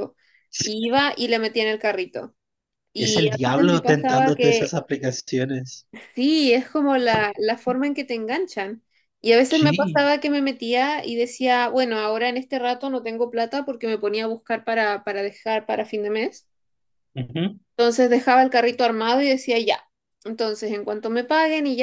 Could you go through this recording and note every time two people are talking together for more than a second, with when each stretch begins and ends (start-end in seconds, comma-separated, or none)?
3.0-4.8